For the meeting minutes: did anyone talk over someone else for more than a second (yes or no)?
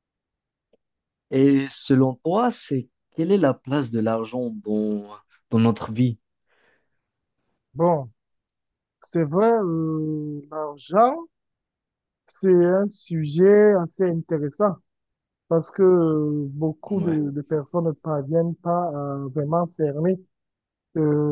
no